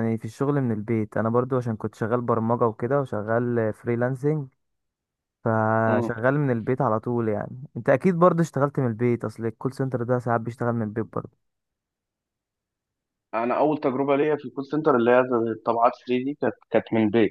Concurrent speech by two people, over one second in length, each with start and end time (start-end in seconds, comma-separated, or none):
none